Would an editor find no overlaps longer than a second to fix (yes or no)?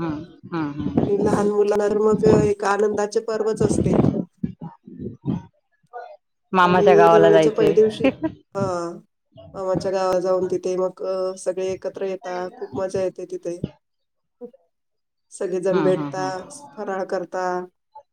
no